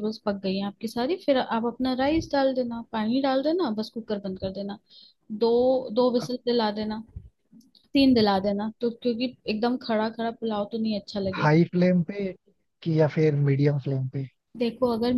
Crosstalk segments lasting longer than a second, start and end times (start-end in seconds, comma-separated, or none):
none